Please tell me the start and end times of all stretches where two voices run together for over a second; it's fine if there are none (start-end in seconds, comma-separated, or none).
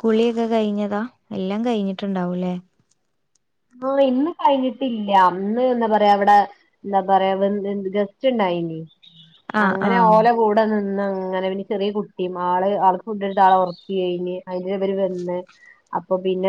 none